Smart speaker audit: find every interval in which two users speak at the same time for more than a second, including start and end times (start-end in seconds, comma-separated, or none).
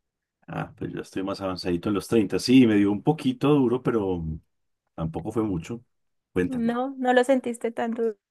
none